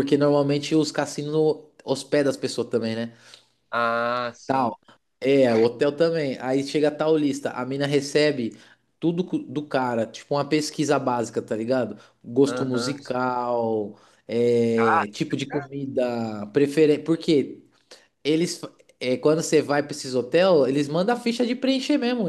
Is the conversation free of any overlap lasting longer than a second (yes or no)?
yes